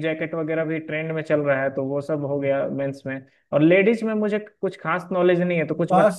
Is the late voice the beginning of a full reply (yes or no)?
yes